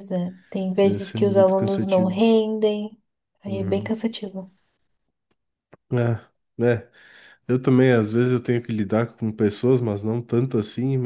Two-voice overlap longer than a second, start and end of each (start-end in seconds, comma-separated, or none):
0.8-2.2